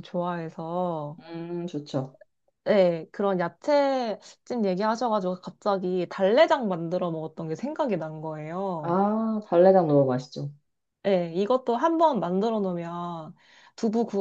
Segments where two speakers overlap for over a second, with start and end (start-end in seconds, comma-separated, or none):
none